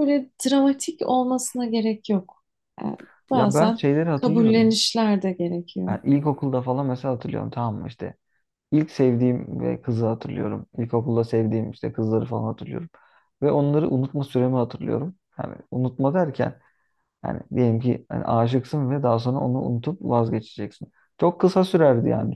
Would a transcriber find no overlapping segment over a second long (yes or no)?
no